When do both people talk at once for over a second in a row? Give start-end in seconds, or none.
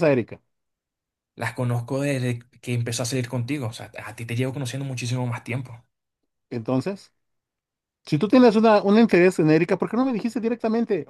none